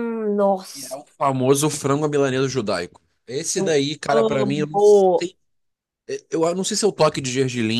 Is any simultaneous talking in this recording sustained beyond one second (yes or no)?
yes